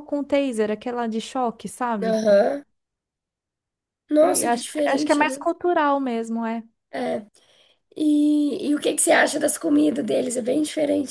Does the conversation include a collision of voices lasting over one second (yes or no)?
yes